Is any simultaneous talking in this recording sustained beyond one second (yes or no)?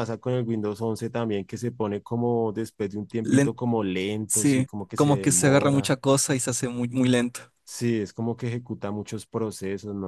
yes